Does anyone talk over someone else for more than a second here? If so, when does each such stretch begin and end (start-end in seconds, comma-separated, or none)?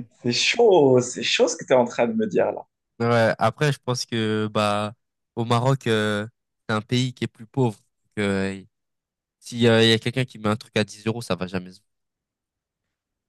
none